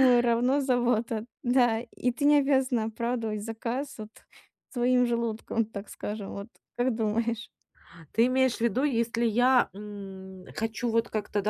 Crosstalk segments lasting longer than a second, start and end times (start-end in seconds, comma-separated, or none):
none